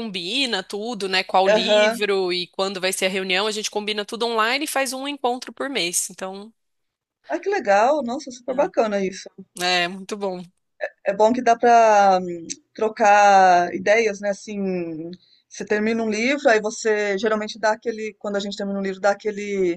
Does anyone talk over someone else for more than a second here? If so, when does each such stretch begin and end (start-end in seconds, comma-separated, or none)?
none